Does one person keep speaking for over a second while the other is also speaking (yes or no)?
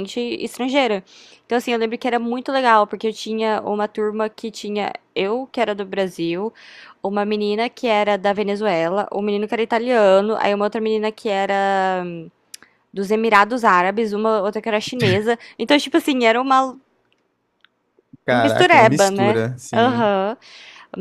yes